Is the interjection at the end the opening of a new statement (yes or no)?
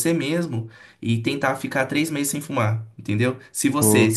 no